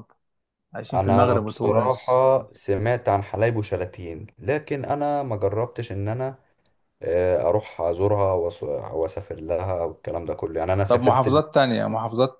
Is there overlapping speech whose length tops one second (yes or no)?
yes